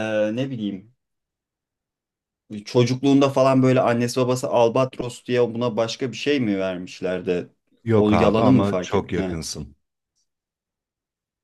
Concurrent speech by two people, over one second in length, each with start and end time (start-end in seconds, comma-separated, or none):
8.0-9.4